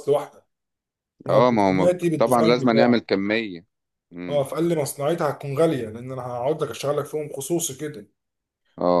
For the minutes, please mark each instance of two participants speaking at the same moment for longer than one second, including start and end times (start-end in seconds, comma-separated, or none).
1.3-3.0